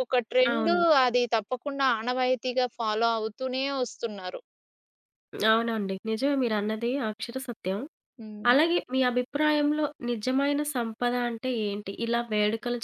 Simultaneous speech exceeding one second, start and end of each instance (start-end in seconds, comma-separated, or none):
none